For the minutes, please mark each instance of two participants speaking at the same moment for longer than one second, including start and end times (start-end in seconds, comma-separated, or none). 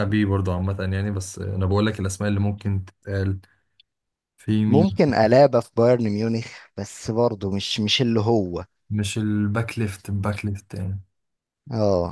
none